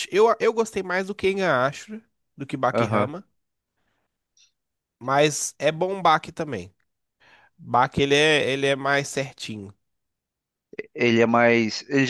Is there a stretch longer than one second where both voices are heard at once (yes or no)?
no